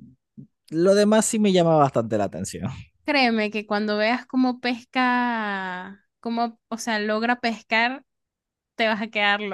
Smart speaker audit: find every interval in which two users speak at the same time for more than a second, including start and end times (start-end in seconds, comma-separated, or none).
none